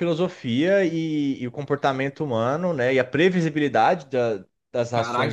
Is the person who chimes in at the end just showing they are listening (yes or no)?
no